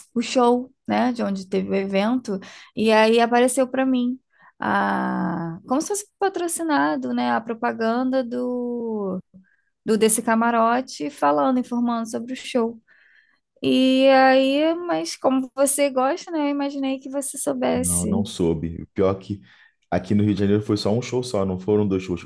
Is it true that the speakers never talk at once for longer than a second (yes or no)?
yes